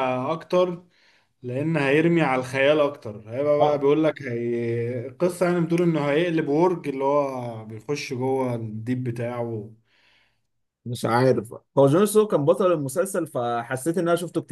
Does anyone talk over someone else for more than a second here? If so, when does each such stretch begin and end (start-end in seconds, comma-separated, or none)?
none